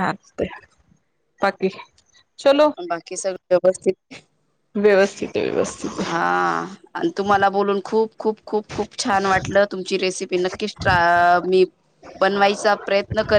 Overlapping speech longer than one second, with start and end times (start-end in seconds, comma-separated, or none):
none